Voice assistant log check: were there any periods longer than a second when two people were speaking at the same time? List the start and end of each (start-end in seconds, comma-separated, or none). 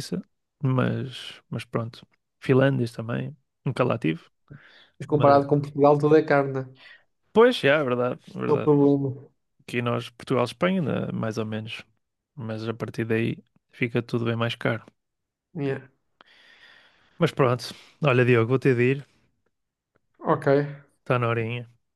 none